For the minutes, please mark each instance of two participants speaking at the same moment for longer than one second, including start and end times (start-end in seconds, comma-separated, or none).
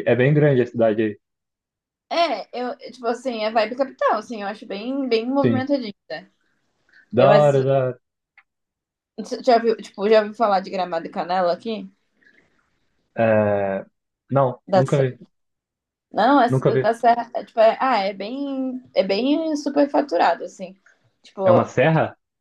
none